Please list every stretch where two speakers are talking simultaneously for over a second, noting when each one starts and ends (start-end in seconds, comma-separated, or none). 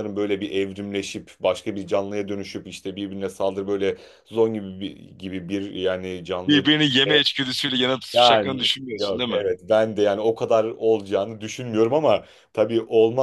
8.1-9.4